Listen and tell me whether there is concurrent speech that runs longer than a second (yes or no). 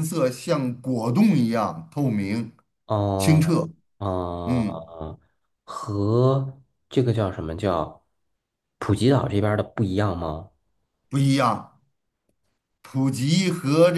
no